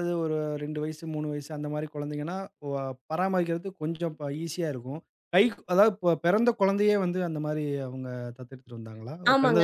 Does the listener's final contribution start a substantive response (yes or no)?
yes